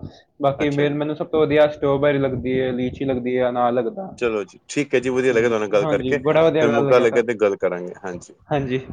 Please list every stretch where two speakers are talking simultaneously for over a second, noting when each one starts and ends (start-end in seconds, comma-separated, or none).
5.3-7.3